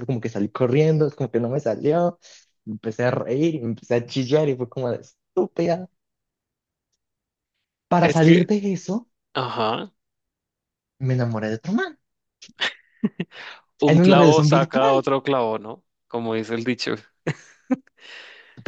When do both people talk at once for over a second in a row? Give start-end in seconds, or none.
13.8-15.1